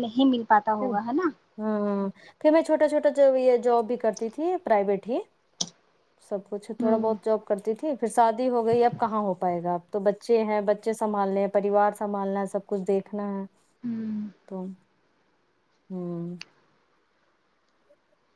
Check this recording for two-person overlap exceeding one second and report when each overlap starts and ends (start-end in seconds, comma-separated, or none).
none